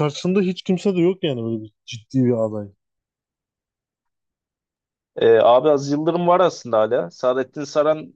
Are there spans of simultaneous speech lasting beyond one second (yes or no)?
no